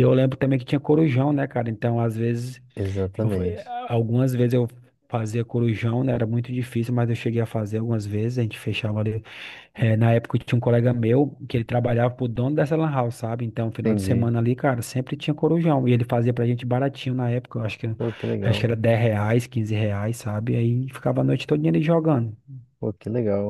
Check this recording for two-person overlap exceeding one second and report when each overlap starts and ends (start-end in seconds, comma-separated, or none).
none